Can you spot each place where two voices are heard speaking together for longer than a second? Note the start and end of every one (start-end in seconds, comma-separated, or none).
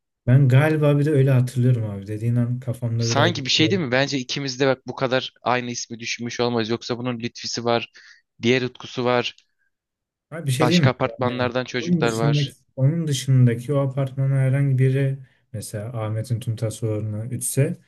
10.6-12.6